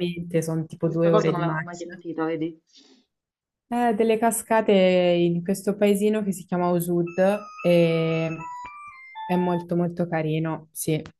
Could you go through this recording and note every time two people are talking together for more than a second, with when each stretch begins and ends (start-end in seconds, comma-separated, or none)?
0.8-2.0